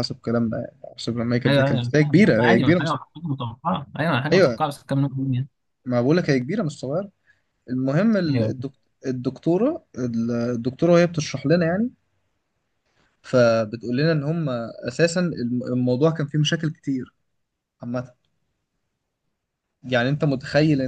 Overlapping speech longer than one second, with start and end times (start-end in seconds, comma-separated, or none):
1.5-3.0